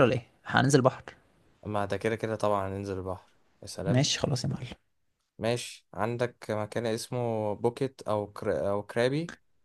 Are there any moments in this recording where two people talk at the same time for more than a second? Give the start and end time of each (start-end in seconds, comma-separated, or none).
none